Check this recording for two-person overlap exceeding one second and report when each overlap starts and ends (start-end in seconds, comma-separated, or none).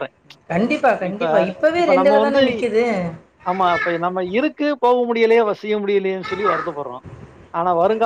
none